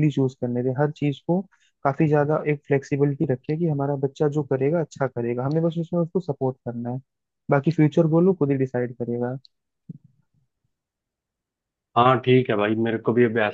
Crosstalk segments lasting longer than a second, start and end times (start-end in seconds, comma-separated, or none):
none